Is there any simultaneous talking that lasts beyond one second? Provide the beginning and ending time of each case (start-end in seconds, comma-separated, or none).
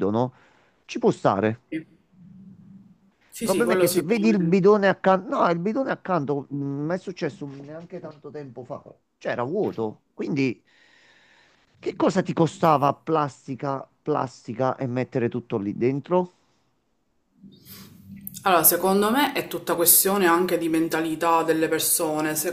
3.3-4.6